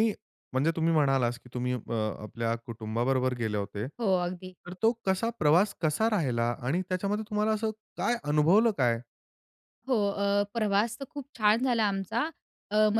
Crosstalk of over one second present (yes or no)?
no